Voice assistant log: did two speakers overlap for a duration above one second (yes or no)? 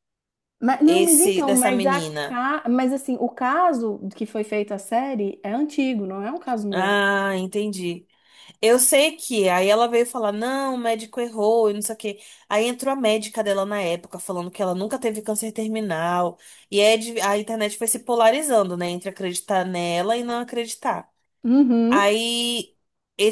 yes